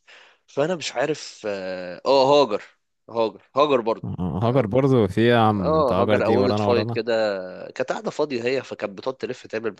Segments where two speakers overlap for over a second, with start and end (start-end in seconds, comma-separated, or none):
5.6-7.0